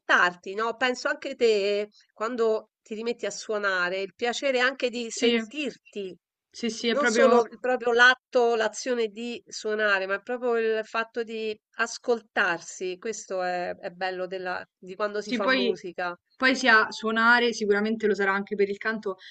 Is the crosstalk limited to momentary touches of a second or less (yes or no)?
yes